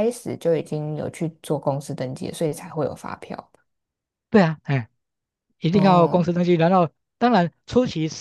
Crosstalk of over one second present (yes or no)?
no